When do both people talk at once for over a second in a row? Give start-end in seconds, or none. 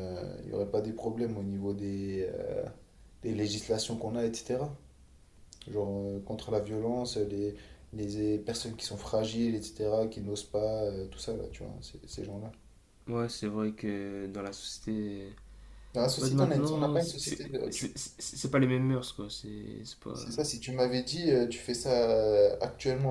16.2-17.9